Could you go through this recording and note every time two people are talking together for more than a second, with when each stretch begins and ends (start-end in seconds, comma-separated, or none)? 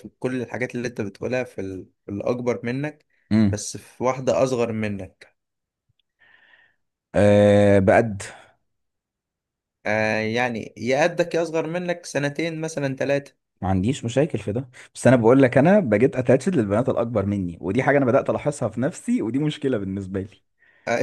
none